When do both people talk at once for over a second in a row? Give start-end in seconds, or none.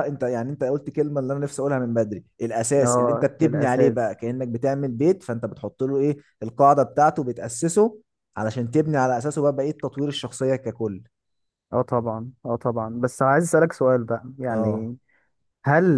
2.8-4.1